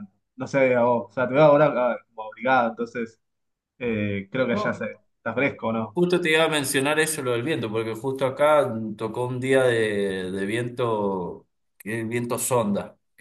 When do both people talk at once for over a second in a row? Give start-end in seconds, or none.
none